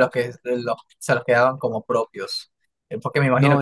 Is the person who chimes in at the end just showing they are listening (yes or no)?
yes